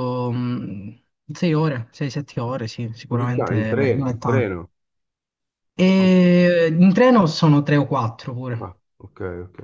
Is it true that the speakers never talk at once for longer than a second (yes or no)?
no